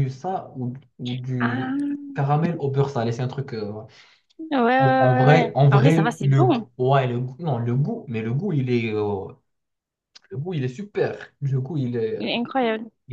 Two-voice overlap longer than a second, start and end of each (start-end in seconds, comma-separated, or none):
4.8-6.7